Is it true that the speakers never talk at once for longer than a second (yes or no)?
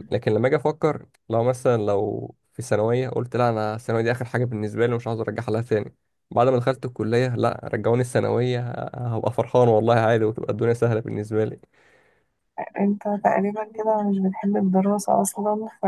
yes